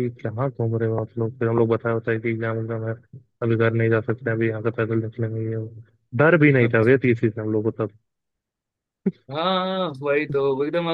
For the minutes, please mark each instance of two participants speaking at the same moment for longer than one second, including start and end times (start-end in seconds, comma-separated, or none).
none